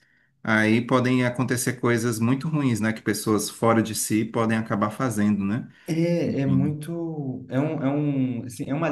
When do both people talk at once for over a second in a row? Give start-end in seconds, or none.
none